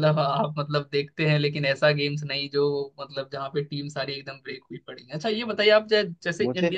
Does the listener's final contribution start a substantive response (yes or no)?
no